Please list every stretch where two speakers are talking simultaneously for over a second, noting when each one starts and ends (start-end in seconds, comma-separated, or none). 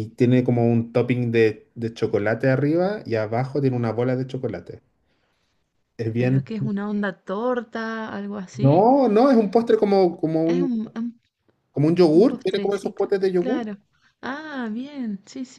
12.1-13.6